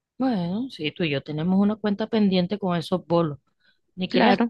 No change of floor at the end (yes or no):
no